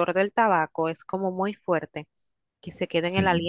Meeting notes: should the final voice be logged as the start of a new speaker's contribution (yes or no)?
no